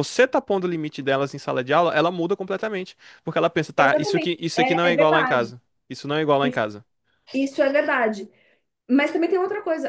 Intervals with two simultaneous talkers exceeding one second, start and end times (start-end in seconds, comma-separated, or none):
3.8-5.5